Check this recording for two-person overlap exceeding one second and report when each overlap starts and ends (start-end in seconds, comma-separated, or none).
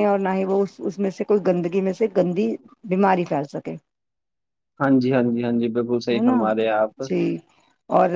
none